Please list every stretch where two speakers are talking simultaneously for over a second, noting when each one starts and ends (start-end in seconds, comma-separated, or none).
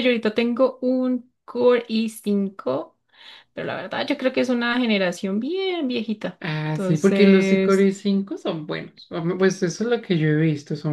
6.4-7.9